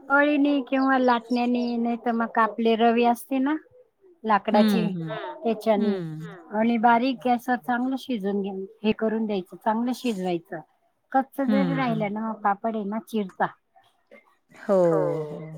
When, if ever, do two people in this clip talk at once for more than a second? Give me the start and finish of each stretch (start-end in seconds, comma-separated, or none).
none